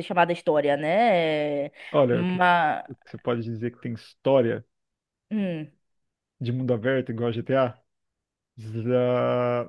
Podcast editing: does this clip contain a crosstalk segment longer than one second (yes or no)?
no